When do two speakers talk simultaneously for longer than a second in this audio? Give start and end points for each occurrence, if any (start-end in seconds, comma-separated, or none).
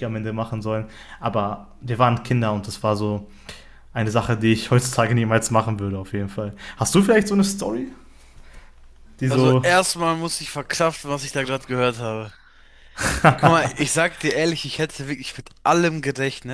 none